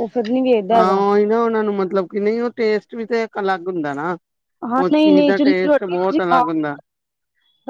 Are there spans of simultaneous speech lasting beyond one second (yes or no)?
yes